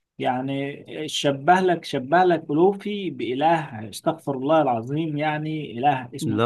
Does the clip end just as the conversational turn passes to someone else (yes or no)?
no